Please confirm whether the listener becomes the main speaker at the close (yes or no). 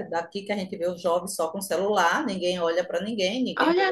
yes